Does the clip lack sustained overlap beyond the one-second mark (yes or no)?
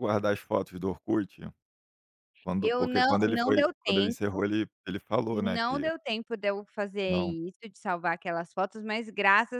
no